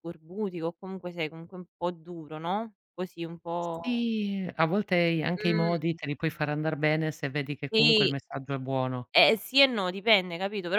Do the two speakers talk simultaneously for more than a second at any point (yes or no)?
no